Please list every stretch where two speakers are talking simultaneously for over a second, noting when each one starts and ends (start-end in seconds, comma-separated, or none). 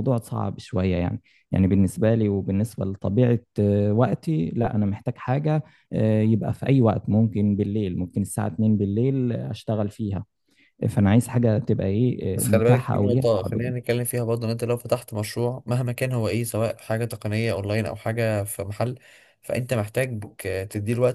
12.3-13.9